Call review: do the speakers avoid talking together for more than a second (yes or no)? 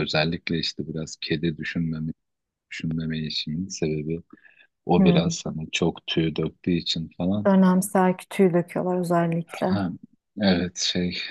yes